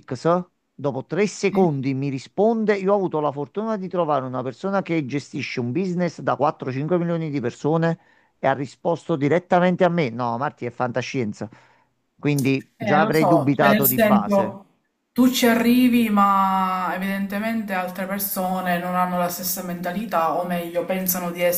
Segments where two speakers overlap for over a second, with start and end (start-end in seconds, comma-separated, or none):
12.8-14.6